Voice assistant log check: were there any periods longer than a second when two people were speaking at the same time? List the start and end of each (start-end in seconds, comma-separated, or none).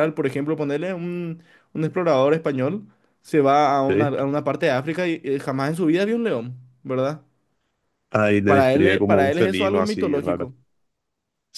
8.5-10.5